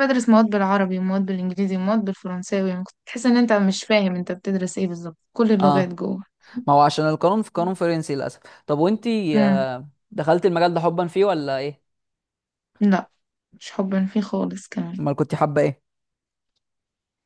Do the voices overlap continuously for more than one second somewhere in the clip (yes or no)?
no